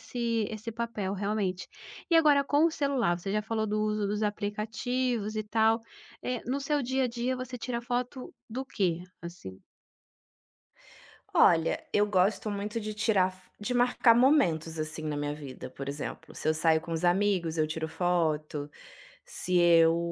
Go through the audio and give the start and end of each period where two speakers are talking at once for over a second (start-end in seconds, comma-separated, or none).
none